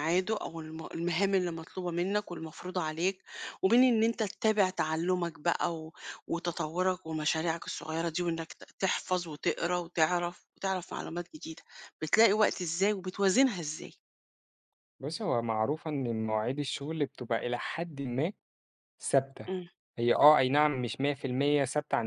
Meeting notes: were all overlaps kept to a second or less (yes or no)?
yes